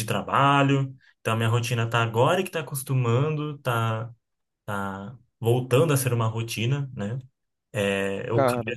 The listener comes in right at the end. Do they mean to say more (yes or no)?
no